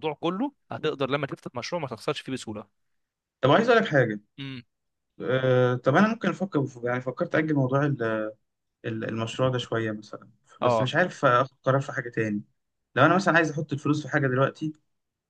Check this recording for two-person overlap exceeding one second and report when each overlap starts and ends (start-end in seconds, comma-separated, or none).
none